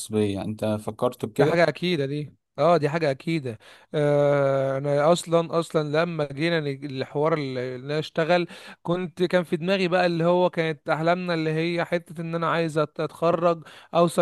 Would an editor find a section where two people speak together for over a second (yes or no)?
no